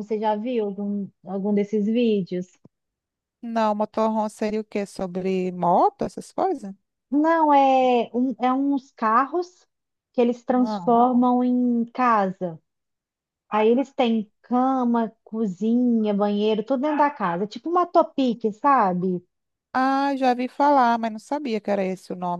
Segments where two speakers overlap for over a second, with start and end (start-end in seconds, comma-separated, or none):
none